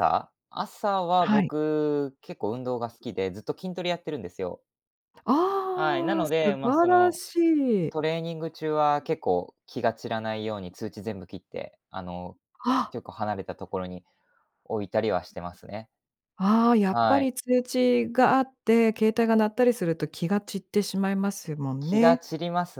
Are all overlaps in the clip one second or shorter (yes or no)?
no